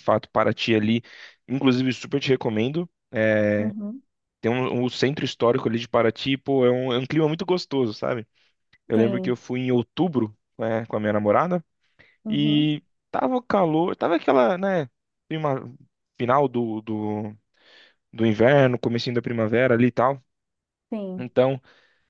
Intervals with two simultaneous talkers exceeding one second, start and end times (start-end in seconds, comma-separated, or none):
none